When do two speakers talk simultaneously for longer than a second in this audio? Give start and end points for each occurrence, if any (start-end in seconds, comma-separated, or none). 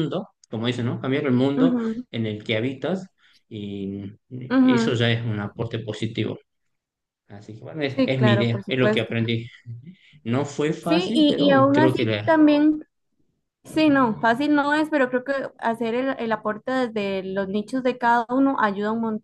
8.0-9.2, 10.9-12.3